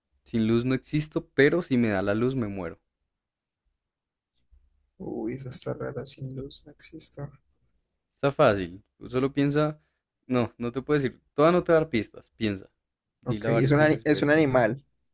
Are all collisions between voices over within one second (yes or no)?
no